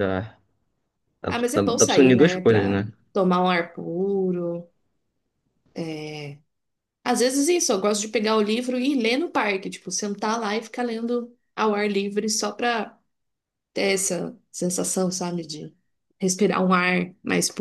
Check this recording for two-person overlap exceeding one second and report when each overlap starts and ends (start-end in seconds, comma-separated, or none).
1.3-2.9